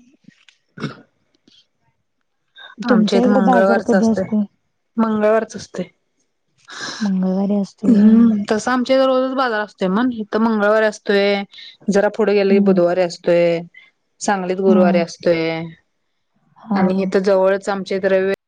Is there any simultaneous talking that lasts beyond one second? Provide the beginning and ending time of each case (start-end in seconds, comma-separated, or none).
2.9-4.2